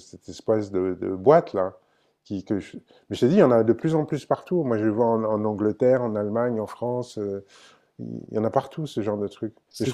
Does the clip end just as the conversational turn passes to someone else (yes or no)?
no